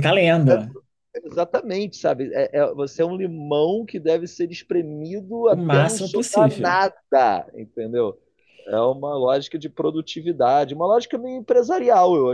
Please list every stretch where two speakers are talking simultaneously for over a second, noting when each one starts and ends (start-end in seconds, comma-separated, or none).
5.5-6.8